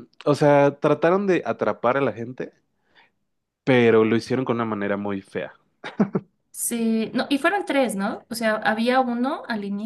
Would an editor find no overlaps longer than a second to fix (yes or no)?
yes